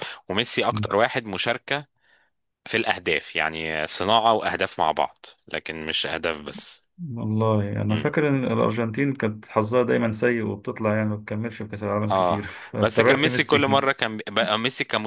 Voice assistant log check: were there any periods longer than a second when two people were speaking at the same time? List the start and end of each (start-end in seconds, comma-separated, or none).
12.1-13.9